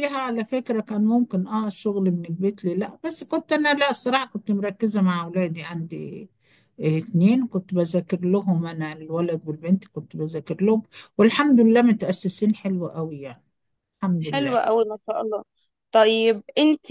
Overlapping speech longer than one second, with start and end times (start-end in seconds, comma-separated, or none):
none